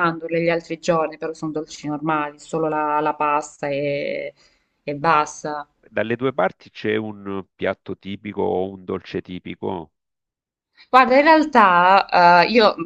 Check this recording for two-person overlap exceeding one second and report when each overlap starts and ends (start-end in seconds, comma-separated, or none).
none